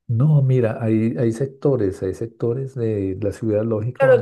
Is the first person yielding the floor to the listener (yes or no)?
yes